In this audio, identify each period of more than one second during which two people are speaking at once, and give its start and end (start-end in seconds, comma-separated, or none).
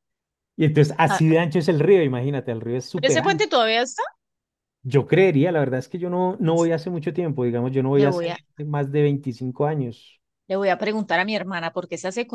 none